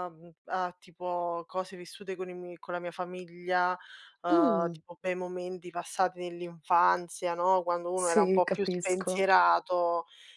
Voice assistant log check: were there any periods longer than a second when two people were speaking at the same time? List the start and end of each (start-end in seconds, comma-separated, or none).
7.9-9.3